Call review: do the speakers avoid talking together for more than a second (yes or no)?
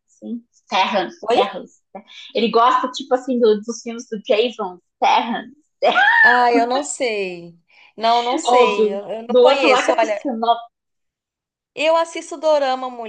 no